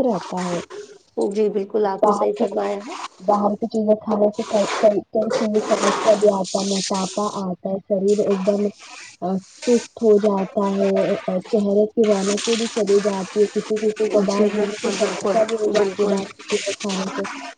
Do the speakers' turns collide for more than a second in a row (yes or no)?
yes